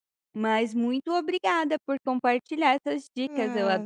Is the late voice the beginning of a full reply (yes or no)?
yes